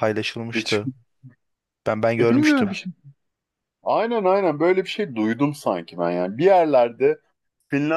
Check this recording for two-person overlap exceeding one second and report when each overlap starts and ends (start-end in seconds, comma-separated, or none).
none